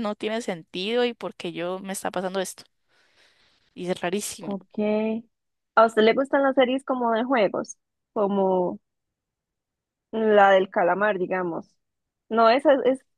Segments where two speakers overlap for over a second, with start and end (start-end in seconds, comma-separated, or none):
none